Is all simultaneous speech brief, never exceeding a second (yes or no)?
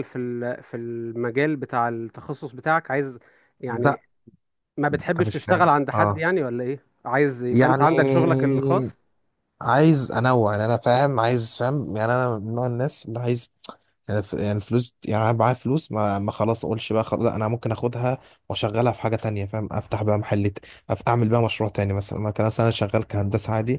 no